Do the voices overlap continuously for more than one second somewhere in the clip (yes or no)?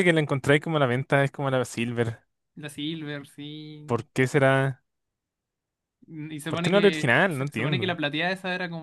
yes